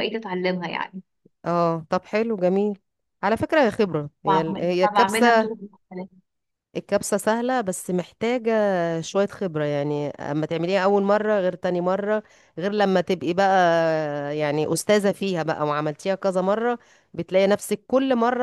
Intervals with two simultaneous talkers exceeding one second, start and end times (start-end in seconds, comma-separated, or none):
4.3-5.5